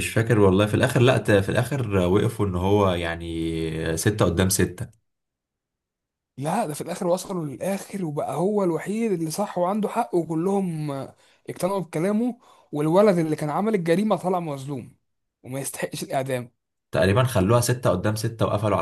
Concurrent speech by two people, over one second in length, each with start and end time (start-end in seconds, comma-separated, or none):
none